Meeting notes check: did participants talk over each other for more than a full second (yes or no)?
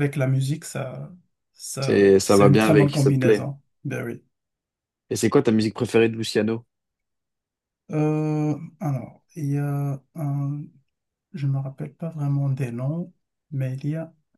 yes